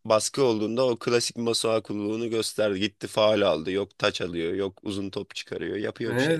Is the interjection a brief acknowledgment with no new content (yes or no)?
no